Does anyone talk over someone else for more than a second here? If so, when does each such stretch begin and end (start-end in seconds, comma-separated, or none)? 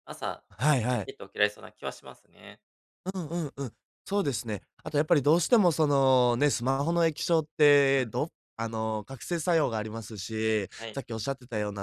none